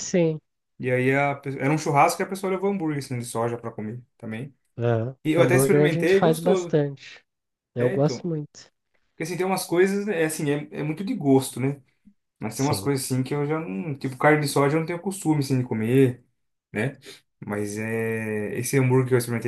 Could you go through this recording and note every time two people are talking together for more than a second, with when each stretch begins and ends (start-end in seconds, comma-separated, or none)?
5.2-6.8